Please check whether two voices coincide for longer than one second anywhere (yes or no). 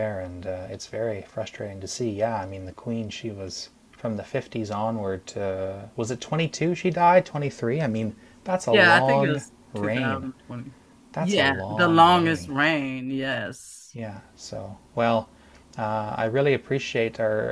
yes